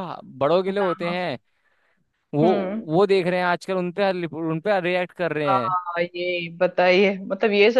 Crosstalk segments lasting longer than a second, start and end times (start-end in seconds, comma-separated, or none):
none